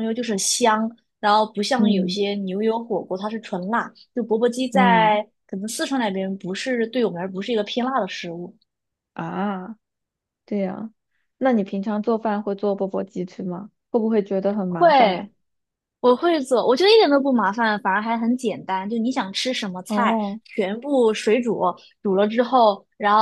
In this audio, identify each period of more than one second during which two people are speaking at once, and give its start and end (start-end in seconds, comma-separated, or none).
none